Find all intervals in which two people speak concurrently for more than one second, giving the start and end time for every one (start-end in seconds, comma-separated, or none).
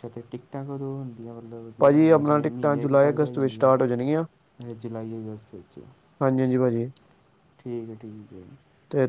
1.8-3.7